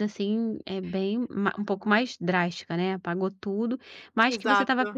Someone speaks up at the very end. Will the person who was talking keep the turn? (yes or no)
yes